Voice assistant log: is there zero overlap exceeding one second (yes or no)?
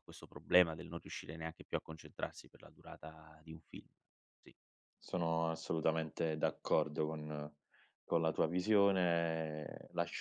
yes